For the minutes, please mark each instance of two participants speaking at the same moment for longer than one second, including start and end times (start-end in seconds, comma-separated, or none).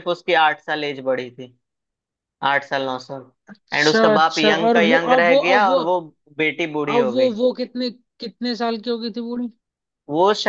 3.7-5.8